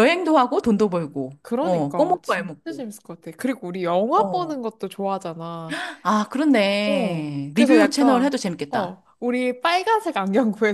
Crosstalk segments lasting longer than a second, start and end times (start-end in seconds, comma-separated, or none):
0.9-2.8, 6.8-9.0